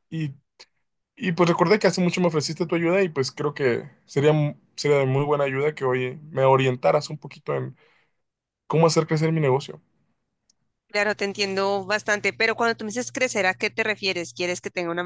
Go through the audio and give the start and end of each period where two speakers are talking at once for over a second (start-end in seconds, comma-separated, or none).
none